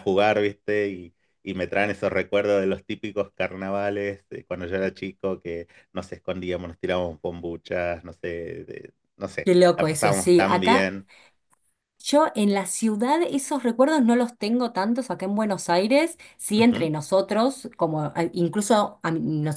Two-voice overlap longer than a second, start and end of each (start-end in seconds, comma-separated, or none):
9.4-10.9